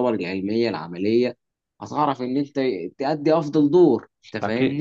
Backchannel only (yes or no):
no